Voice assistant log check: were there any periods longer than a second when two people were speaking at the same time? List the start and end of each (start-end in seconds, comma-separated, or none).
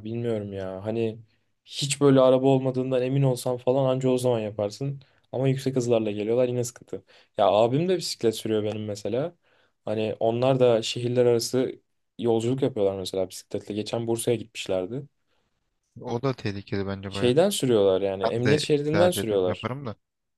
18.2-19.7